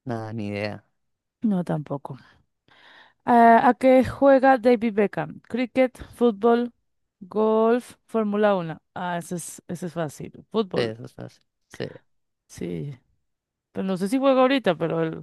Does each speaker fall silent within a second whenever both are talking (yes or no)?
yes